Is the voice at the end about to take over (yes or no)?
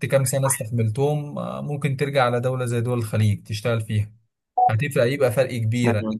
no